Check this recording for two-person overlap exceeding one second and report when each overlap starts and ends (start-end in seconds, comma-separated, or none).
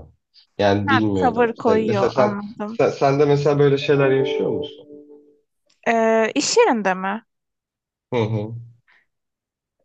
0.9-2.8